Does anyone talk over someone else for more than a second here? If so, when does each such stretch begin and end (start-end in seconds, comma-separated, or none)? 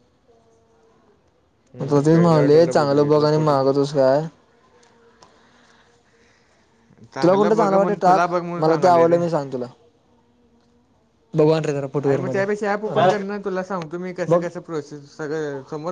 1.8-3.7, 7.2-9.2